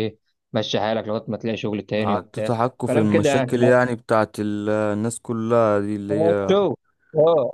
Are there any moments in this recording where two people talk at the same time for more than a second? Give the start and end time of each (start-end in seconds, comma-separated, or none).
2.0-3.8